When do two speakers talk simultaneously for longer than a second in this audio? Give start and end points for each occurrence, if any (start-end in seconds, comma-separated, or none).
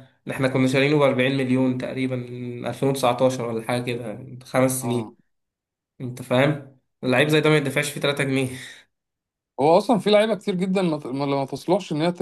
none